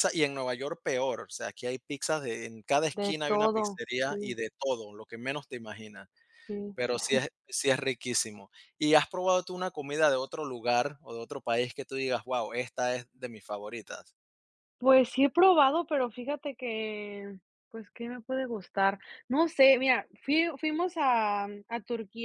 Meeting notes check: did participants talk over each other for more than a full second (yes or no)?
yes